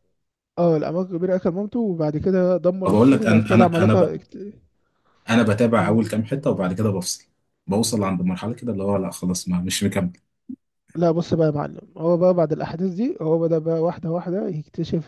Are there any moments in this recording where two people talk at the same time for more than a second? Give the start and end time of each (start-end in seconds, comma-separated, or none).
2.9-4.2